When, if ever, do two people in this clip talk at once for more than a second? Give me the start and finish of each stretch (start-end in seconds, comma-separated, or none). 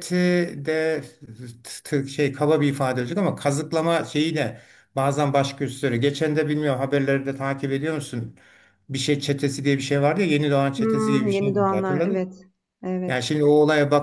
10.8-12.4